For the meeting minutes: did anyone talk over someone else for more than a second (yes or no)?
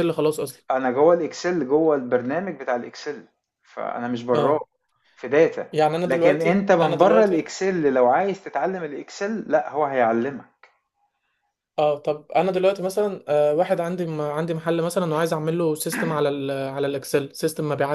yes